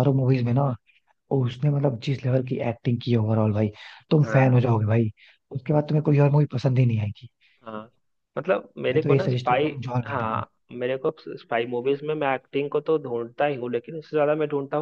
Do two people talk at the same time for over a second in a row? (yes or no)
yes